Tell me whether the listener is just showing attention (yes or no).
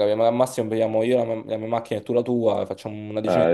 yes